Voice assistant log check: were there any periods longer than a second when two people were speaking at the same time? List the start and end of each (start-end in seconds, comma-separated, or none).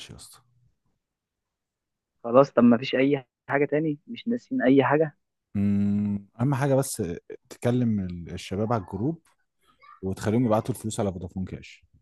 none